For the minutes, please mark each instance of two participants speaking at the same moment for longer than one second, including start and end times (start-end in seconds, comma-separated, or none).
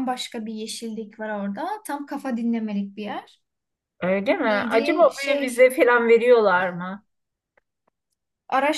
4.4-5.7